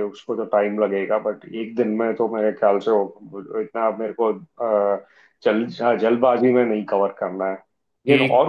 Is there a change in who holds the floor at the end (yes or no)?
no